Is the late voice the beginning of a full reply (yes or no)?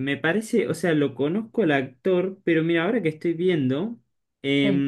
no